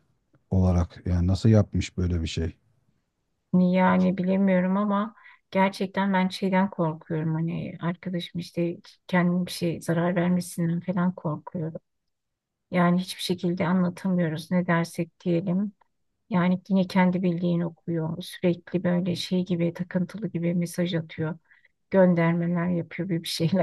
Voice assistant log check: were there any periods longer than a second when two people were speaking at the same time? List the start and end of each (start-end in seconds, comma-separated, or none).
none